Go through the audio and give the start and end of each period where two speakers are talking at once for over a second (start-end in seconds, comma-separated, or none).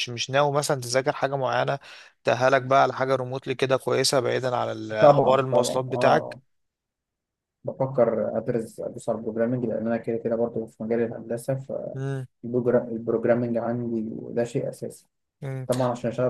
5.0-6.4